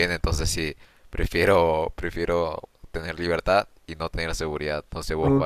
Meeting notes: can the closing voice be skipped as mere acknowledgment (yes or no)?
no